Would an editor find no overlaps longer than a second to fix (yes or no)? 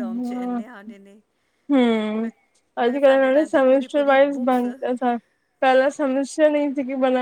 no